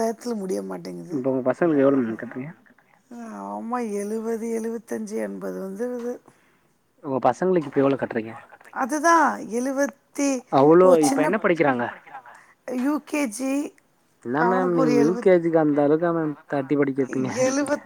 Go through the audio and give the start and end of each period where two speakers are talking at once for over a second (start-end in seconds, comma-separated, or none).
none